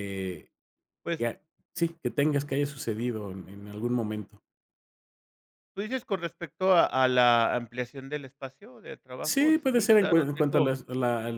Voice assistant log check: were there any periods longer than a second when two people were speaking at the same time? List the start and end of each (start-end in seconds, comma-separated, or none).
9.2-10.7